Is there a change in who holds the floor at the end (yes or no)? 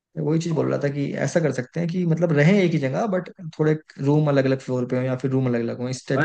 yes